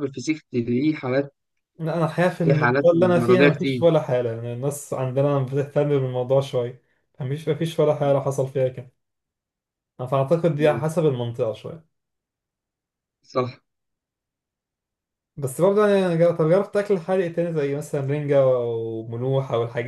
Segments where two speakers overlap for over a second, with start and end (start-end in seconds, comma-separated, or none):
2.4-3.9